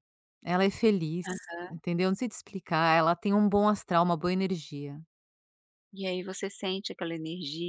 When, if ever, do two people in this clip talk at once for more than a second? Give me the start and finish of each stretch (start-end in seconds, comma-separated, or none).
none